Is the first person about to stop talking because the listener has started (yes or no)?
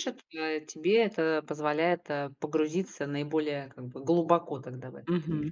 yes